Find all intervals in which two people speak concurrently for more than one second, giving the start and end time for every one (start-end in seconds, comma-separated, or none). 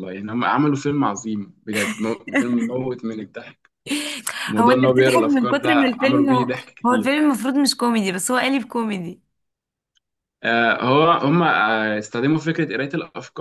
4.6-7.1